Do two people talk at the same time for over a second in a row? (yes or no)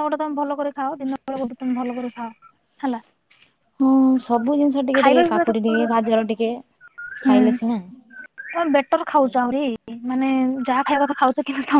no